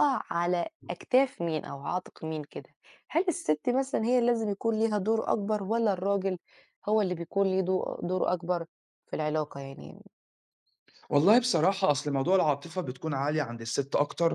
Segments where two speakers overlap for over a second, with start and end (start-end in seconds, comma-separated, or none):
none